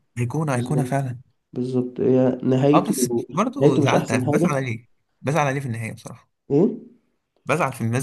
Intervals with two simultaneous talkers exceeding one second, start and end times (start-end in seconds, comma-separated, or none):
2.7-4.6